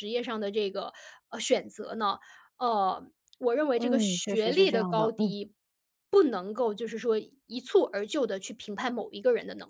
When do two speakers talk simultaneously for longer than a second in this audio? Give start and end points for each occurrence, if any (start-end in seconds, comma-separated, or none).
3.7-5.3